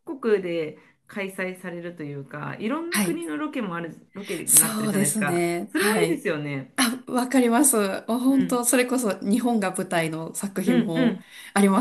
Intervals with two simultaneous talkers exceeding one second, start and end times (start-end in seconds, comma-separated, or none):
4.5-6.2